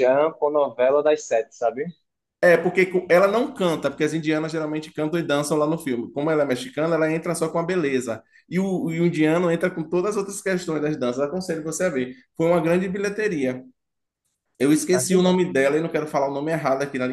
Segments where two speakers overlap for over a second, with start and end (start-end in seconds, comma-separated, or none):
none